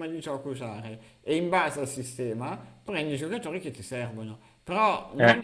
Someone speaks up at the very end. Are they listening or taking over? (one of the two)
listening